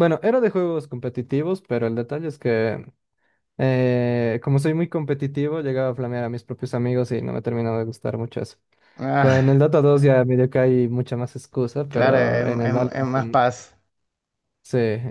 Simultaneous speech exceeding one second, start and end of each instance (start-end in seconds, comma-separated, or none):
11.9-13.4